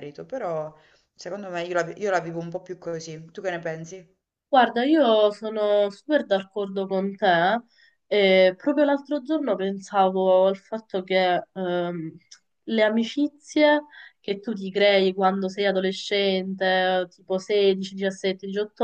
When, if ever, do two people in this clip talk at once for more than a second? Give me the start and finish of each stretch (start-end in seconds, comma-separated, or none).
none